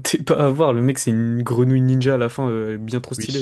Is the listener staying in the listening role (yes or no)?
no